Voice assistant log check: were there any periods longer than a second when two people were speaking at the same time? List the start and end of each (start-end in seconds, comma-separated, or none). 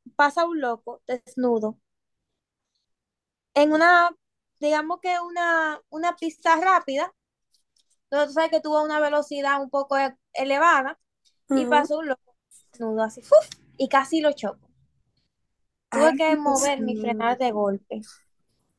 15.9-17.2